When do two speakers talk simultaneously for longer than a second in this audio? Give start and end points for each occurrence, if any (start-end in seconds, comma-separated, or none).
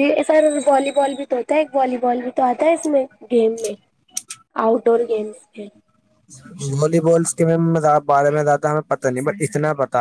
none